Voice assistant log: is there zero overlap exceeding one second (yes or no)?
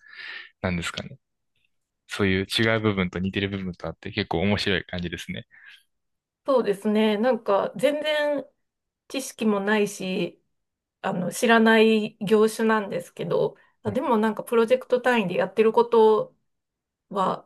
yes